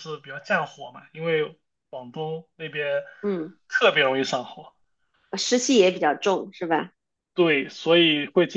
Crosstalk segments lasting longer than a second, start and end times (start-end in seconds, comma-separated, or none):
none